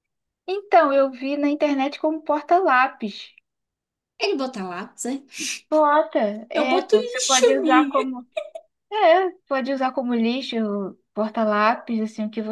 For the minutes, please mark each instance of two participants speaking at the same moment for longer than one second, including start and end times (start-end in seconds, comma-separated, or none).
6.5-8.0